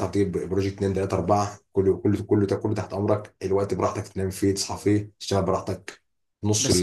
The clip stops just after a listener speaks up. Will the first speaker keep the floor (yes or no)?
no